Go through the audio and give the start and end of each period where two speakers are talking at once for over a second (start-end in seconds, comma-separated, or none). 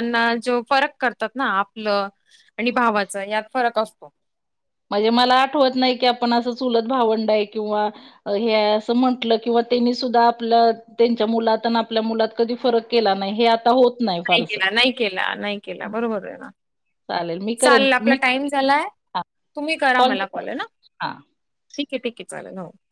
none